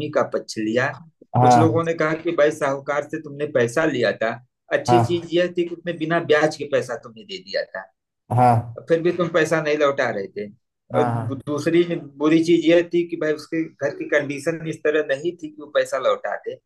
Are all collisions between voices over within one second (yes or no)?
yes